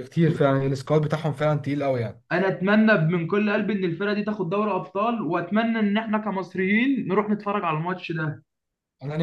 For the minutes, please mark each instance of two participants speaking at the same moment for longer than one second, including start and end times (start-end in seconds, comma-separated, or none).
none